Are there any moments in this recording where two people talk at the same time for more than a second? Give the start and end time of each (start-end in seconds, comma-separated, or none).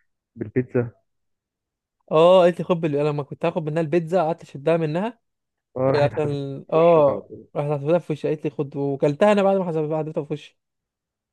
6.0-7.5